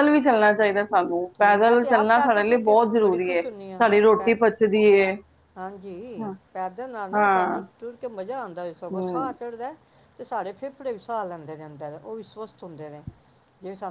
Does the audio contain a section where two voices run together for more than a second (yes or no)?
yes